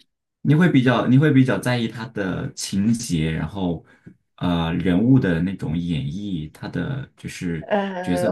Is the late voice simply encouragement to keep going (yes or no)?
no